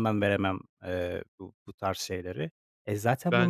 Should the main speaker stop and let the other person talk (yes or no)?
no